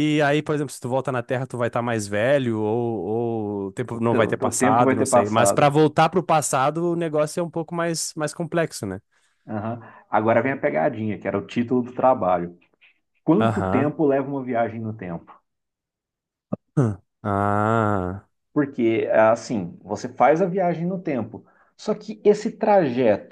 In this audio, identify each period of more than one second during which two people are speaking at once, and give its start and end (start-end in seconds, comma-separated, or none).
3.9-5.7